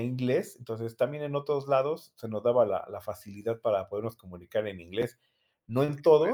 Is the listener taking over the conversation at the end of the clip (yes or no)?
no